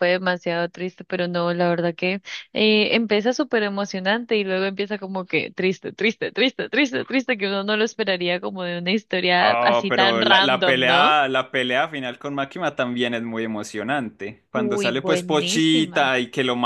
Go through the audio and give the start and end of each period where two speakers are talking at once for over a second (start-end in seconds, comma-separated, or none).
9.4-11.1, 14.5-16.1